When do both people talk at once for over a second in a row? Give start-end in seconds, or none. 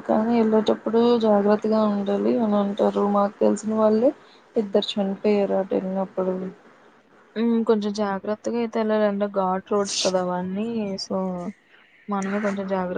none